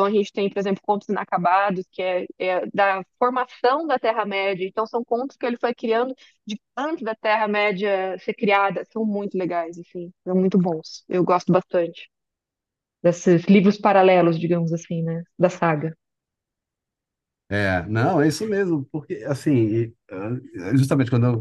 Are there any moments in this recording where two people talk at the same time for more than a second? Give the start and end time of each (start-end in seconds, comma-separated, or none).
none